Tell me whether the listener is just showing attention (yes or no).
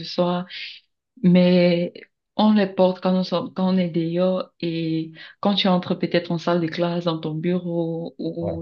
yes